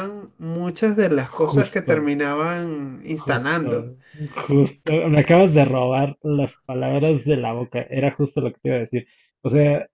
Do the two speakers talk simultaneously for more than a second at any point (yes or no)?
no